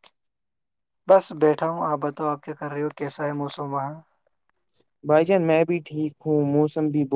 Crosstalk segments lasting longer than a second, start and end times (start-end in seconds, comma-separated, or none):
none